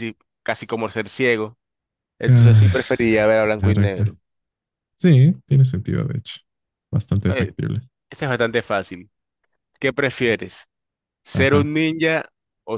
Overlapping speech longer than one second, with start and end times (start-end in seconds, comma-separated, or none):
none